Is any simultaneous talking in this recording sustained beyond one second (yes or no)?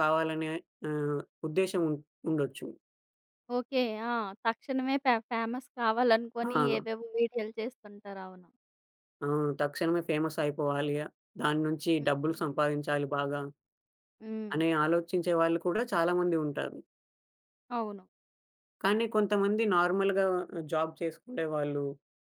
no